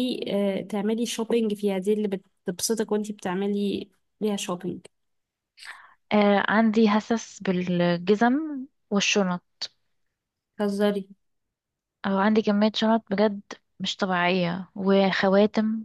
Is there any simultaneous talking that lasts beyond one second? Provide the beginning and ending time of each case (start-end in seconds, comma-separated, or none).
none